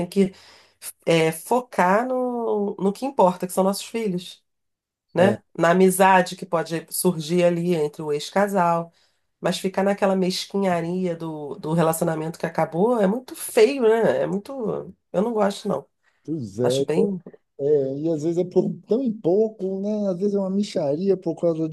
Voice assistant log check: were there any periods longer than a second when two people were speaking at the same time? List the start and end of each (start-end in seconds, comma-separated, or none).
none